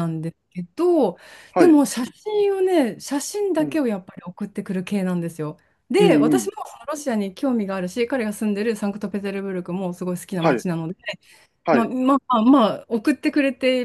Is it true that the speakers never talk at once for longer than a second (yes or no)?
yes